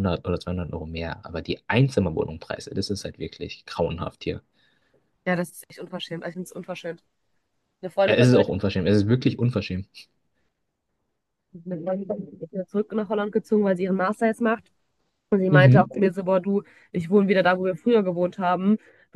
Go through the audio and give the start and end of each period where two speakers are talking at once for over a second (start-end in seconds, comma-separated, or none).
none